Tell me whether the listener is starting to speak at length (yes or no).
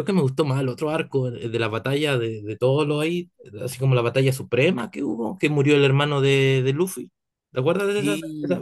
yes